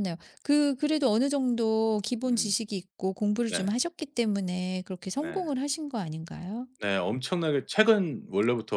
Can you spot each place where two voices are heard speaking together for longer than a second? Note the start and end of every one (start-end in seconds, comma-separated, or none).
none